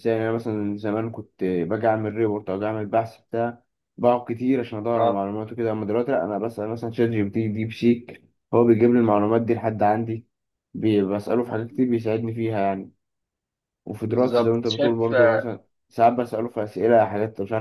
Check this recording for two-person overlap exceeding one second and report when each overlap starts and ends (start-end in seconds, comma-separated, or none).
14.1-15.5